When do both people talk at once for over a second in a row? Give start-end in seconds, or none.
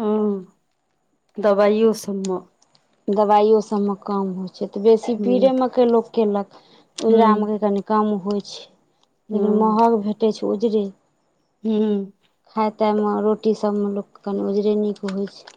none